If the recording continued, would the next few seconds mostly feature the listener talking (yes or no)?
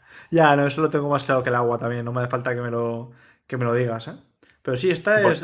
no